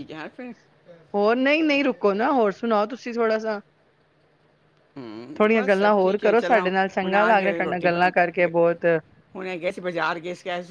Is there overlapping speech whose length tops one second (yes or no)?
yes